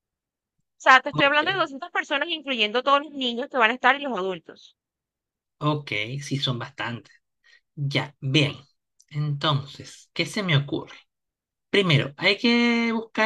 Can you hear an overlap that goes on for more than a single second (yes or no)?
no